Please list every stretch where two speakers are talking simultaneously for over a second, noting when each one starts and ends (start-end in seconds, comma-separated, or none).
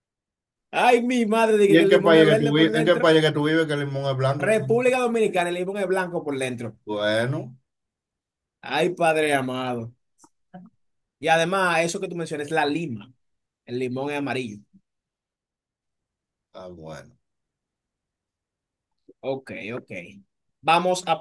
1.7-3.1